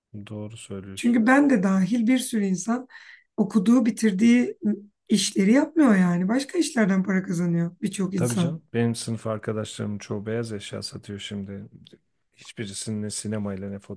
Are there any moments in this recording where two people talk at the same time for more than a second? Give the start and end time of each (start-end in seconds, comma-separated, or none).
none